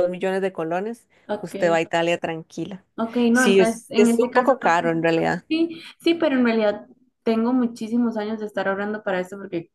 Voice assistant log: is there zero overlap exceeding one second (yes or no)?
no